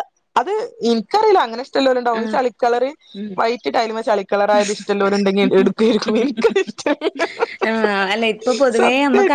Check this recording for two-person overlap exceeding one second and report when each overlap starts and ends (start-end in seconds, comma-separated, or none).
none